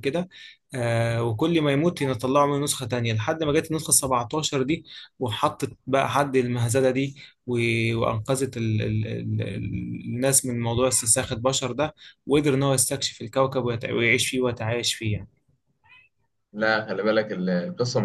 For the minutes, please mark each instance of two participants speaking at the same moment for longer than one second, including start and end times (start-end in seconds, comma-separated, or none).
none